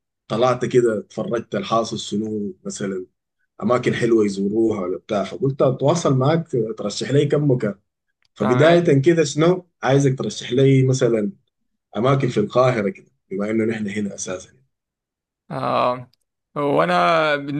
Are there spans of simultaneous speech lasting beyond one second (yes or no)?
no